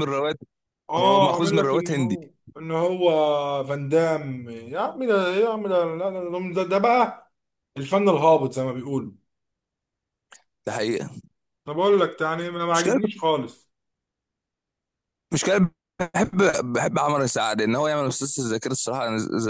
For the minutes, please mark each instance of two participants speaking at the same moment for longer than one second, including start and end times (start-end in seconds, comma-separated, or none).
1.0-2.2